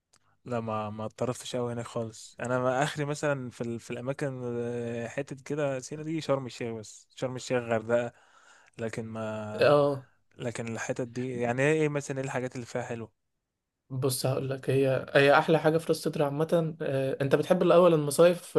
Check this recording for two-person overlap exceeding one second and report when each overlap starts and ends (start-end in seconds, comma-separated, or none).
none